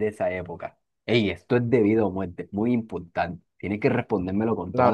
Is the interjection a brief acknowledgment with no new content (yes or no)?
no